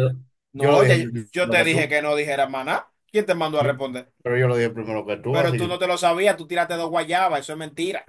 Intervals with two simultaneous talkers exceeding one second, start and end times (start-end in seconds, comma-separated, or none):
0.6-1.9